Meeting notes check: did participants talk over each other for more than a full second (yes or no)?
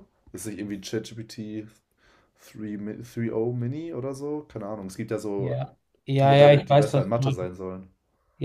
yes